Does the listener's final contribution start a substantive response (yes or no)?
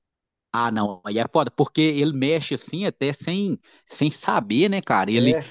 no